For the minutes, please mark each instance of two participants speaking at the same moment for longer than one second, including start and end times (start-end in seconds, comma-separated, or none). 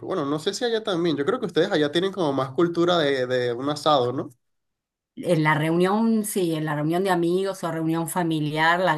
none